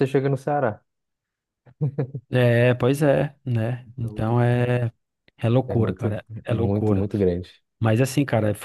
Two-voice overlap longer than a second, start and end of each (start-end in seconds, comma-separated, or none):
5.7-7.1